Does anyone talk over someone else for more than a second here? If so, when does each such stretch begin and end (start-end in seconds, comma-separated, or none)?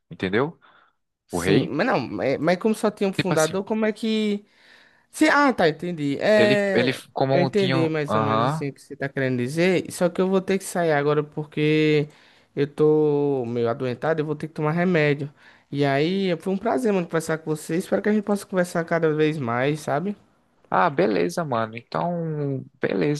6.3-8.7